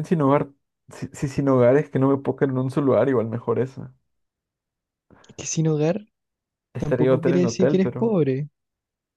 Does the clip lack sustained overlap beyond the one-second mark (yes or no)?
no